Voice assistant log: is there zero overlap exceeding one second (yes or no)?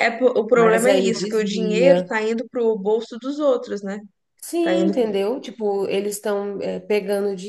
no